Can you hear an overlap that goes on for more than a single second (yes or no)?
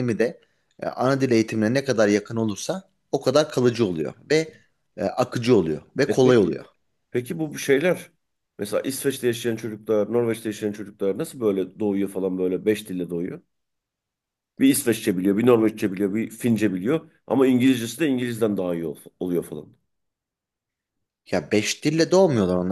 no